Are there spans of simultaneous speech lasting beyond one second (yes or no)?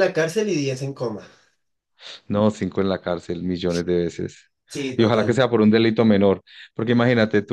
no